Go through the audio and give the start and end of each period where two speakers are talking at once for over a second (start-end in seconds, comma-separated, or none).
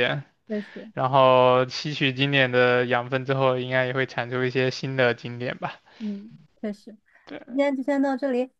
none